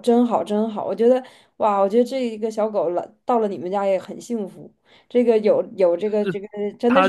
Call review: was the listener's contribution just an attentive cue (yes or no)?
no